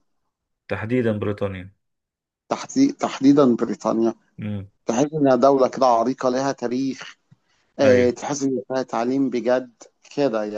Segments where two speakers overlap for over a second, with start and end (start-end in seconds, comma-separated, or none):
none